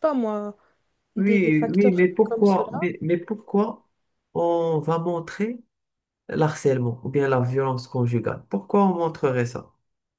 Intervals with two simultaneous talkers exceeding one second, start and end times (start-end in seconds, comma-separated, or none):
1.1-2.7